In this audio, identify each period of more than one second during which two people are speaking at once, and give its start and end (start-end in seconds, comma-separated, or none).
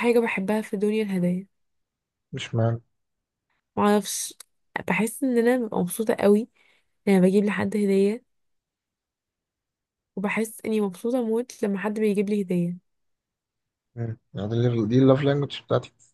none